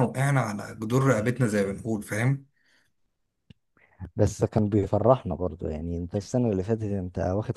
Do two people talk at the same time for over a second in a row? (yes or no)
no